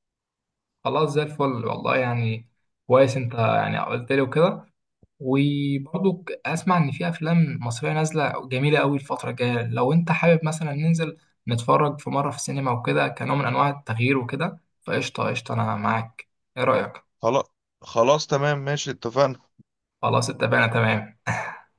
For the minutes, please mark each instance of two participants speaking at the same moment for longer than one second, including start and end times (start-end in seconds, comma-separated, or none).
none